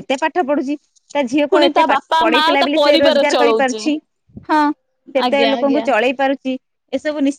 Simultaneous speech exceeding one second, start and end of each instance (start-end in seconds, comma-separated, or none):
1.5-3.8